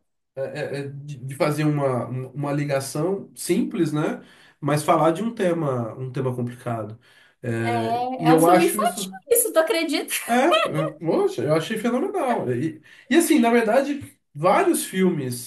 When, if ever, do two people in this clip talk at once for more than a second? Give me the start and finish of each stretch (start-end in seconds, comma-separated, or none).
7.6-9.2